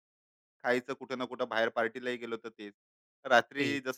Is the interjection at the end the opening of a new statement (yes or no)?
no